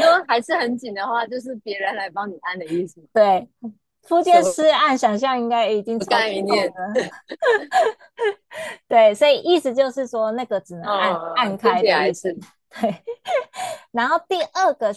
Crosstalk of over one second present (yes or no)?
yes